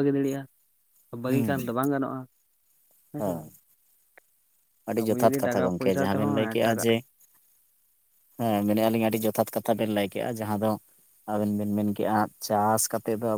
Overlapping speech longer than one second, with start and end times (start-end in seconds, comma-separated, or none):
5.0-6.9